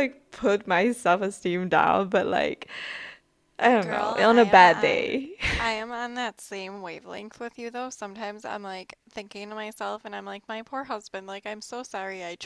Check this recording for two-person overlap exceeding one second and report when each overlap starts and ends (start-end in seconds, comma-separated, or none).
3.8-5.2